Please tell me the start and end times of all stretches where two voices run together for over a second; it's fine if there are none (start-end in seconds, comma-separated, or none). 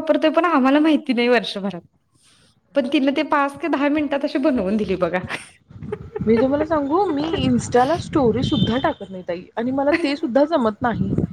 none